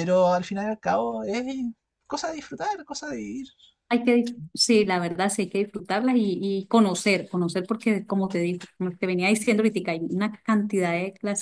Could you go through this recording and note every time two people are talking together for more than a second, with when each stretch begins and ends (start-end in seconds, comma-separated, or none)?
none